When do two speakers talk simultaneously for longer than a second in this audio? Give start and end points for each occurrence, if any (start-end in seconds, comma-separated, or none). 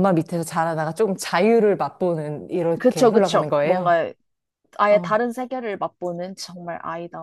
2.8-4.0